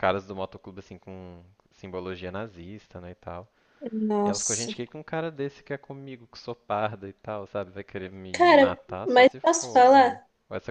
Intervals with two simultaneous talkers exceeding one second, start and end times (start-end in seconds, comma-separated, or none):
8.3-10.2